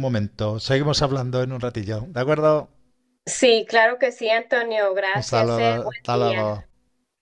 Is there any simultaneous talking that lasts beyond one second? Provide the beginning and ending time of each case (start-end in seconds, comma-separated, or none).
5.1-6.7